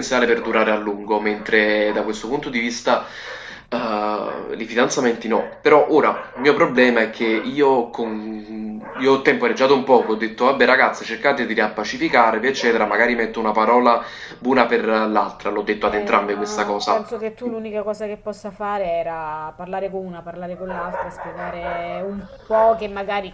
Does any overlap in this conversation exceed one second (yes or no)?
yes